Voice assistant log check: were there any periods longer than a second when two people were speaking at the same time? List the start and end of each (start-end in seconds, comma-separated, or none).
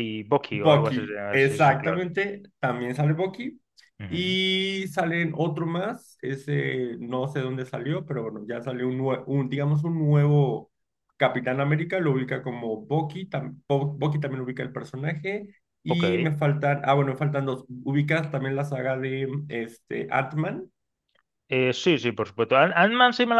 0.5-2.0